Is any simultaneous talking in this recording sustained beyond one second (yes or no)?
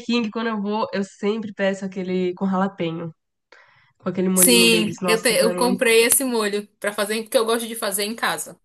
yes